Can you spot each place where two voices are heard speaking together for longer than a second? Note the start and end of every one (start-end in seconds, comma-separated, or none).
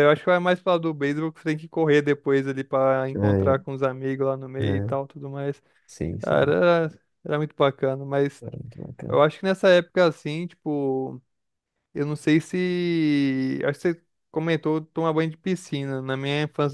none